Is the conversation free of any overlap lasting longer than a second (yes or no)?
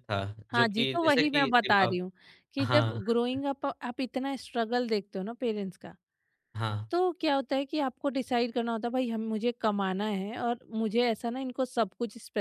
no